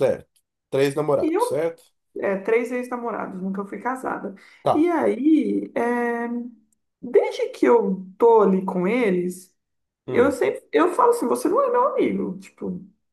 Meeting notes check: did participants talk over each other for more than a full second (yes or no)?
no